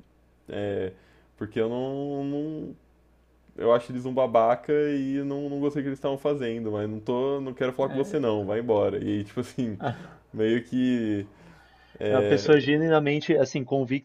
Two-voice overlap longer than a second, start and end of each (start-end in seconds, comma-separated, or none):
none